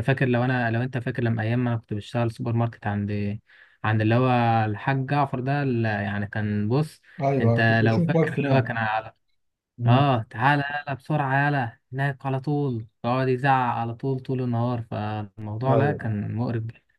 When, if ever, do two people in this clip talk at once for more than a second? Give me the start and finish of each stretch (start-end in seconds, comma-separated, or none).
7.4-8.7